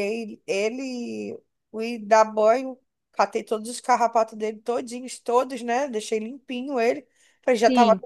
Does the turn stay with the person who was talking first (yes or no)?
yes